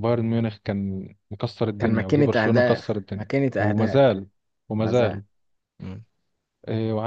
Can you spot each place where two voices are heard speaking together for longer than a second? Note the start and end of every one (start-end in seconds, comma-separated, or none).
1.8-4.0